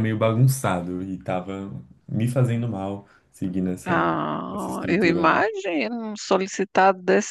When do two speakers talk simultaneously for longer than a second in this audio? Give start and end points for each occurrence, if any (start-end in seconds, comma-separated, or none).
3.9-5.4